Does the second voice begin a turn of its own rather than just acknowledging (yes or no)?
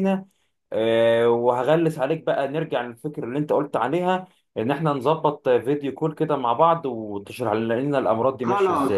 yes